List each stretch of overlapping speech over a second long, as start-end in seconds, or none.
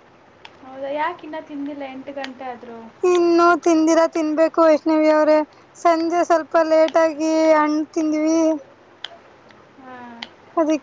none